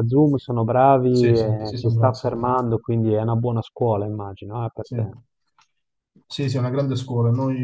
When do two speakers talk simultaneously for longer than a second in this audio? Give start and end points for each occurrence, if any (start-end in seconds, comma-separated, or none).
1.1-2.3